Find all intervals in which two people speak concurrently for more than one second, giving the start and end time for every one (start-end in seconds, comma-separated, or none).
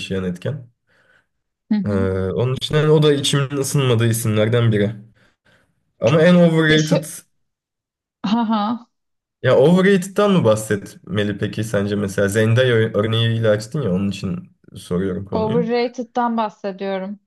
none